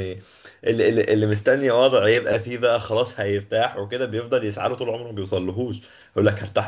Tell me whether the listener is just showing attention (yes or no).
yes